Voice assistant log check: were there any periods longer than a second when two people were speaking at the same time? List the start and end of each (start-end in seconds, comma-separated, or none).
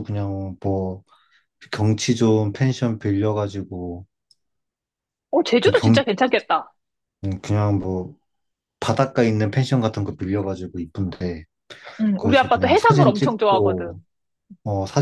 12.2-13.9